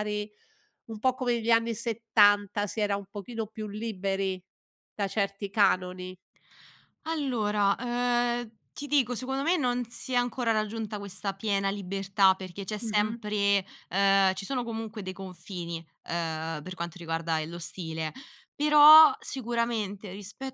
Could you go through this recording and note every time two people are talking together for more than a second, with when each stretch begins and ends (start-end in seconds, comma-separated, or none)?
none